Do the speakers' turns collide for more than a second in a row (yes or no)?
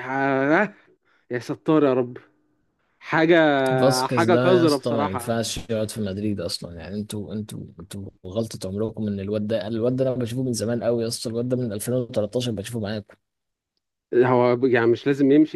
yes